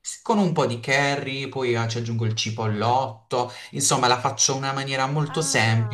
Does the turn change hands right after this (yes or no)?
yes